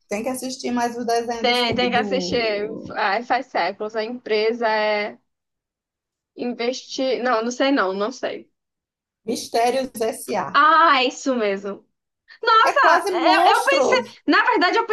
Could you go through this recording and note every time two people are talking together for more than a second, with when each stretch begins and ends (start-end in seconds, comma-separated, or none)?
1.4-3.0, 12.6-14.2